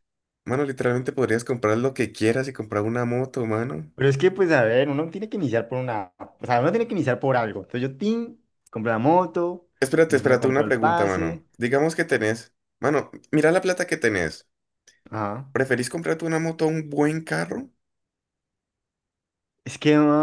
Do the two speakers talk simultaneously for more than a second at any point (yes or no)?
yes